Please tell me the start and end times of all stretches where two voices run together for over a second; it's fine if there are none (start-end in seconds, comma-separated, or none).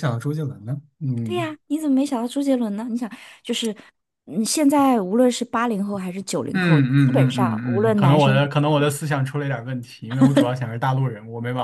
6.5-8.4